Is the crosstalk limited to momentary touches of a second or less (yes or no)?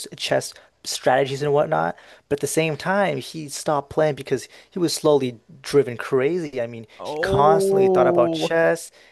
no